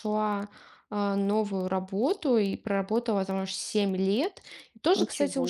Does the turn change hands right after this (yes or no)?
no